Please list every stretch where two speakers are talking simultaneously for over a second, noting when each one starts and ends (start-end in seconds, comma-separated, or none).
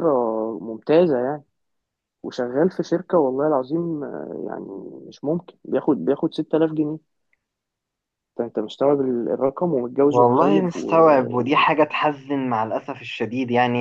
10.1-11.6